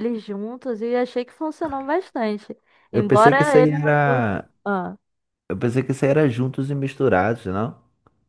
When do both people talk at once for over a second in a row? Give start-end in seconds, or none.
2.9-4.5